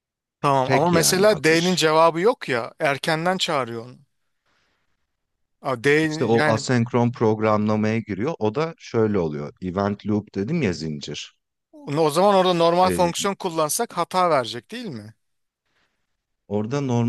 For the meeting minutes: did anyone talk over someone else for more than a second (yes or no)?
yes